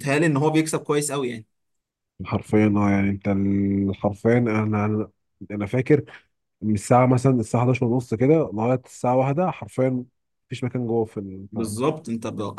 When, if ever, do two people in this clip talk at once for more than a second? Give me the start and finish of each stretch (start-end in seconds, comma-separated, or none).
none